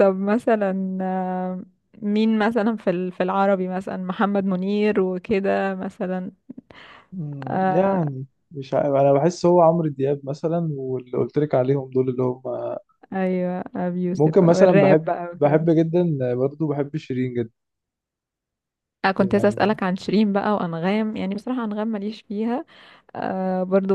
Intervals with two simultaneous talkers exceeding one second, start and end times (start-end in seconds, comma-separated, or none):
14.1-15.6